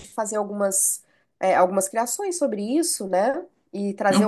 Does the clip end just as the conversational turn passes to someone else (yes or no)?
yes